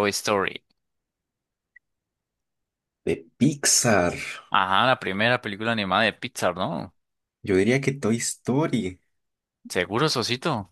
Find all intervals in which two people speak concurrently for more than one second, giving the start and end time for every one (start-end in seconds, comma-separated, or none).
none